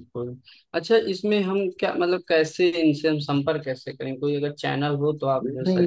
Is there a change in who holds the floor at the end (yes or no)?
yes